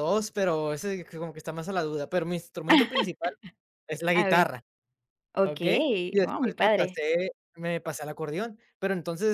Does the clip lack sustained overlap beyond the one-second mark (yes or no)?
no